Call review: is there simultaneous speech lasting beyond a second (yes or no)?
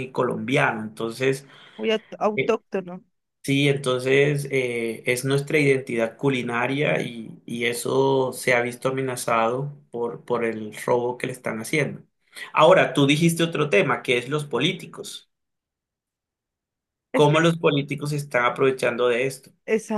no